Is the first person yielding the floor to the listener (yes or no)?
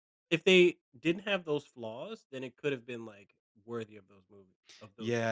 yes